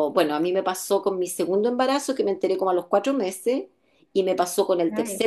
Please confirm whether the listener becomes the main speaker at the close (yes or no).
no